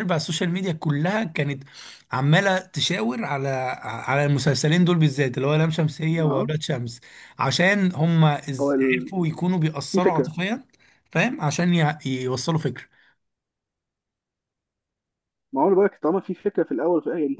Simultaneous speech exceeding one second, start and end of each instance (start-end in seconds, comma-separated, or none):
none